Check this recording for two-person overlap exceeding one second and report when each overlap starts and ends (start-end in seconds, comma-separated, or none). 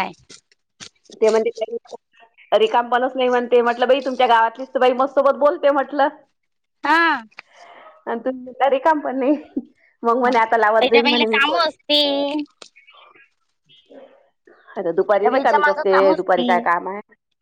10.2-11.6, 15.2-16.5